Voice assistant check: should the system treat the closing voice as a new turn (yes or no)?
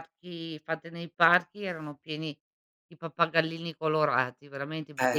yes